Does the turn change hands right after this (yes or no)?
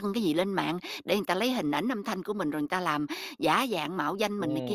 yes